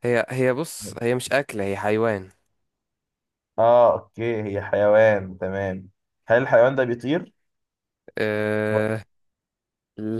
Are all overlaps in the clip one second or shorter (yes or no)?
yes